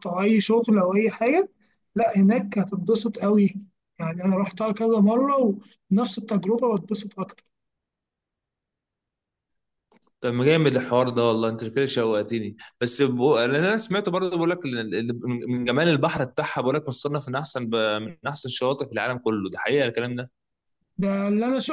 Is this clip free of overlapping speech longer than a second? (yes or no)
yes